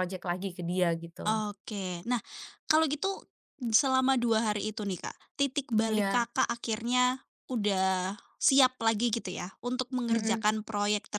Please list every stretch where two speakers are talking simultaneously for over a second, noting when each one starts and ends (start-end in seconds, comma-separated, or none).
none